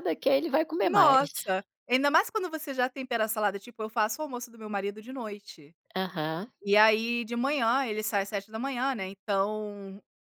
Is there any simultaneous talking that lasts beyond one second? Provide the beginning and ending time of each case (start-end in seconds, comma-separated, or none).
none